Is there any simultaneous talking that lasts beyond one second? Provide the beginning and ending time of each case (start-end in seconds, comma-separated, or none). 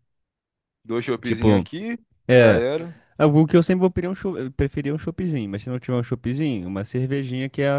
none